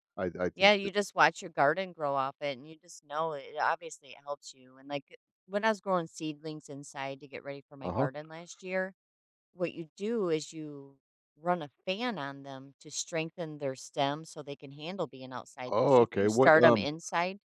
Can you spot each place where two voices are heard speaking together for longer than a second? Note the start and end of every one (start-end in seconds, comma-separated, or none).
15.7-16.9